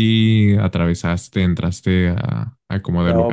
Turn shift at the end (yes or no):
yes